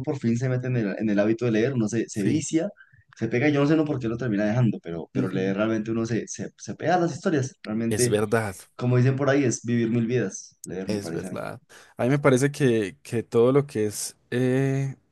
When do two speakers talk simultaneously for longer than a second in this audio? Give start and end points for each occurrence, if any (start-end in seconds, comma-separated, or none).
none